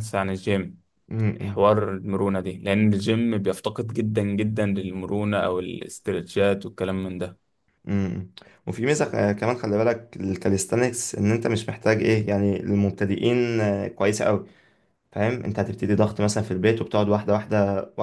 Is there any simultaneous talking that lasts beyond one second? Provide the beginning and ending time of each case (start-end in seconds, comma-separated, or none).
none